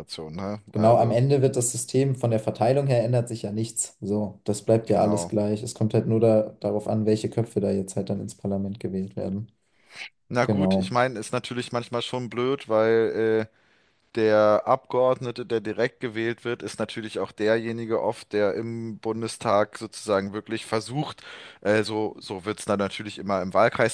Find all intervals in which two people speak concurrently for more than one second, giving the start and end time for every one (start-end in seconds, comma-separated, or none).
none